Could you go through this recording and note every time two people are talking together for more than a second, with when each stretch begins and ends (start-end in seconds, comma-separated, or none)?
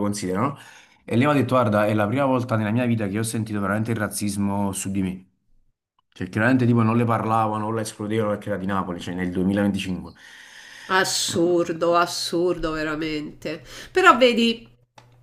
none